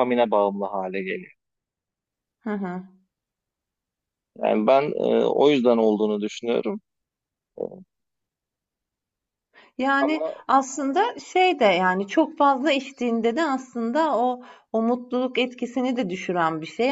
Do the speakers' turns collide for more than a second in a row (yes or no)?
no